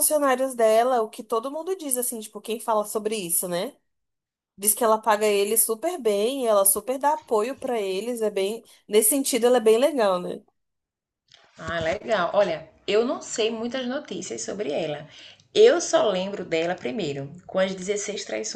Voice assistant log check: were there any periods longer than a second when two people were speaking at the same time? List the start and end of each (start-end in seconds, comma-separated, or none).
none